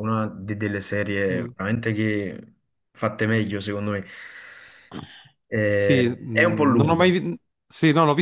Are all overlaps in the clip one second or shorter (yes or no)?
no